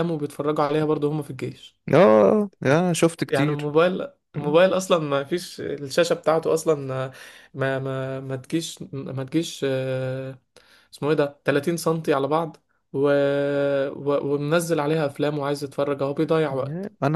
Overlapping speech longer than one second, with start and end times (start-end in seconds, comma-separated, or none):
none